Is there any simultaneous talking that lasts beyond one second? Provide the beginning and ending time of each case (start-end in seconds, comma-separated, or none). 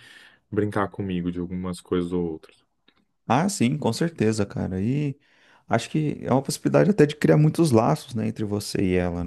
none